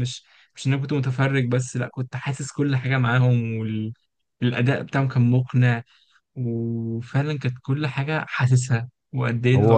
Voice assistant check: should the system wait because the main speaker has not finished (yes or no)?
no